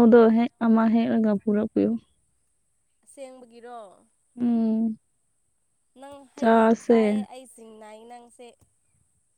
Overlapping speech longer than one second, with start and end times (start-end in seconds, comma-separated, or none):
none